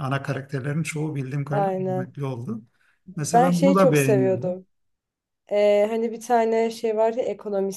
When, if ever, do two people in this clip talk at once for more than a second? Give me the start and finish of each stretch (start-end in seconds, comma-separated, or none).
3.3-4.6